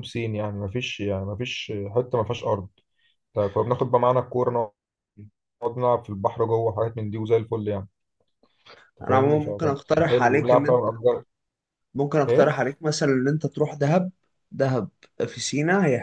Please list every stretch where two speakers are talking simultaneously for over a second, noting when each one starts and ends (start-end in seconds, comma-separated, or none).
9.0-10.9